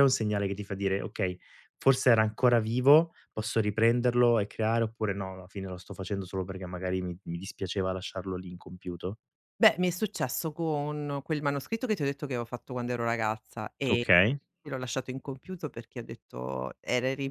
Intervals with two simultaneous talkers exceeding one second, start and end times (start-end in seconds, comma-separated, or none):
none